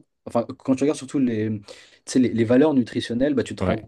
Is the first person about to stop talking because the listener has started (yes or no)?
no